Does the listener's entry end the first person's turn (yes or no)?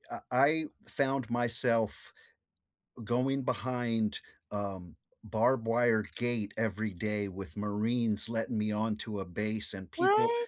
no